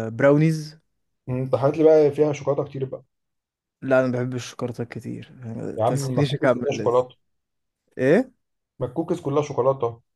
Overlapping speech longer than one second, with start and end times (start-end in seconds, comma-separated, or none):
5.8-7.1